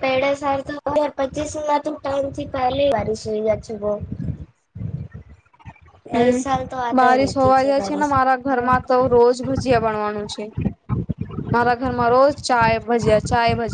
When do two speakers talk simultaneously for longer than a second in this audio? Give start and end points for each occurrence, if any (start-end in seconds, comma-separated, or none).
none